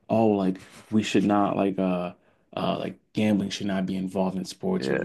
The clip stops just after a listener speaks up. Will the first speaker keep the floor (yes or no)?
yes